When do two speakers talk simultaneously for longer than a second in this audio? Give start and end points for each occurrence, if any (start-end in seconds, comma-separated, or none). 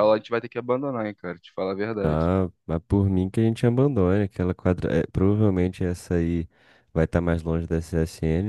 none